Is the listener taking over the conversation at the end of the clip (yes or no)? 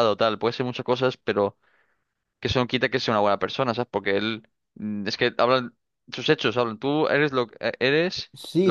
yes